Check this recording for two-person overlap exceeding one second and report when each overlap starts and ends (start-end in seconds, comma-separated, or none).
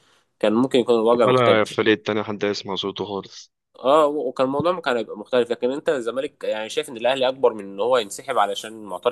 none